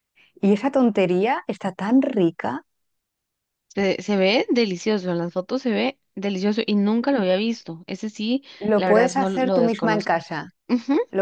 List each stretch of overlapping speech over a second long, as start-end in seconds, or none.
8.6-10.2